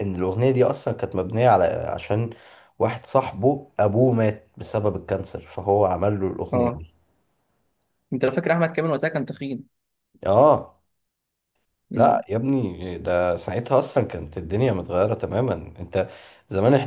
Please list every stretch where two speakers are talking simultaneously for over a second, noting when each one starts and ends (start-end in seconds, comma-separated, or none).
none